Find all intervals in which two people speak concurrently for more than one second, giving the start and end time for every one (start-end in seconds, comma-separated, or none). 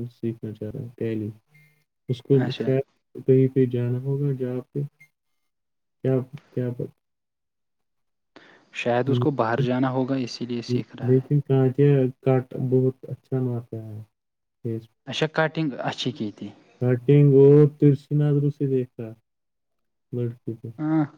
none